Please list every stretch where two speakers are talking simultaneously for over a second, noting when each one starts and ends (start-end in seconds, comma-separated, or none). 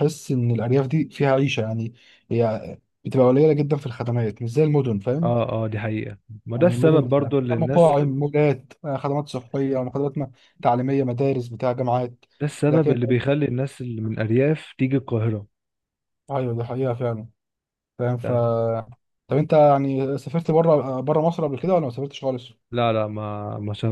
6.6-7.9